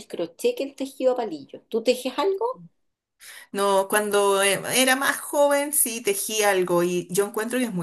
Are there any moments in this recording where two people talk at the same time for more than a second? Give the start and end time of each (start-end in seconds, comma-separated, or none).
none